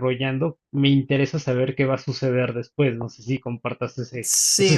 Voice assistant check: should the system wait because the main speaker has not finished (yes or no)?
no